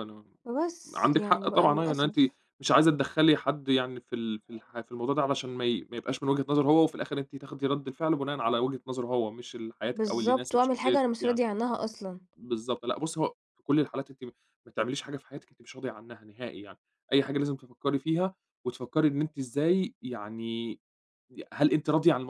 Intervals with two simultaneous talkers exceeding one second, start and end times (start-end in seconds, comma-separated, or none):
0.9-2.1, 9.9-11.4